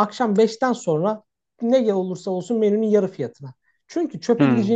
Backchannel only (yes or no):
yes